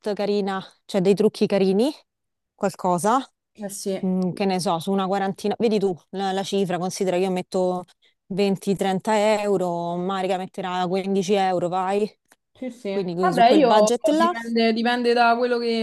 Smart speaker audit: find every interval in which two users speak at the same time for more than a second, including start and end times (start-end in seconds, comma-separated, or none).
12.9-14.3